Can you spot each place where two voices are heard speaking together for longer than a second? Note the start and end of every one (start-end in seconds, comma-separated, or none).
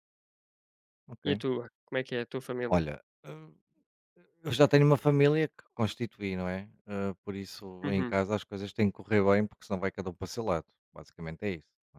none